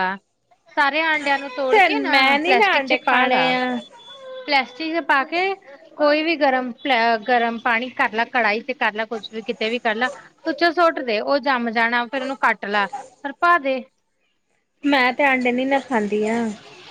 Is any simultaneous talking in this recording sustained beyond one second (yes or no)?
yes